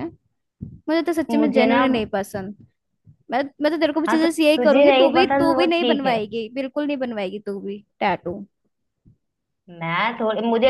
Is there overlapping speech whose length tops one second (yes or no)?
yes